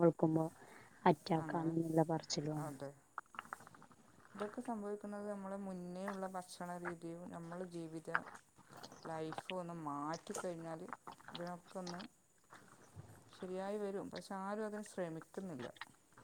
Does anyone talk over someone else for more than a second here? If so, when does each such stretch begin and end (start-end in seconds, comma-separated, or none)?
none